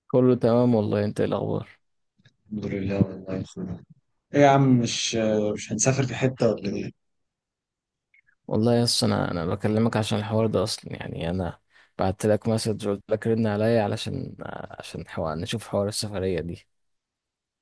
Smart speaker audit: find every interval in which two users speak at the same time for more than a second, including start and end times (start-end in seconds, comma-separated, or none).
none